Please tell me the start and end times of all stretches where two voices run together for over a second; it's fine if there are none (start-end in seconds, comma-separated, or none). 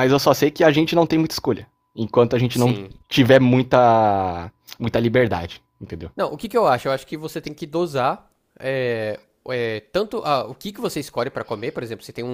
none